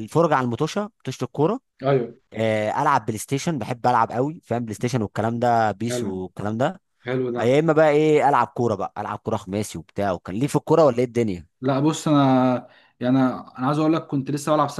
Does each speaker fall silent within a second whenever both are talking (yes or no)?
yes